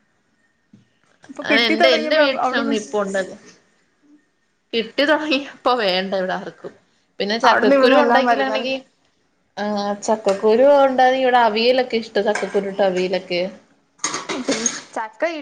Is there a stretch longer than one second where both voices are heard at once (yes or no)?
yes